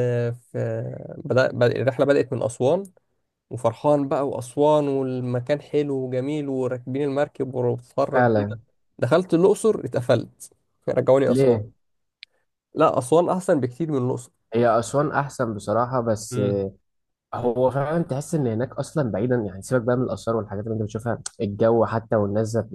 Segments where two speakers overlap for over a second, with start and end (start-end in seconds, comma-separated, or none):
none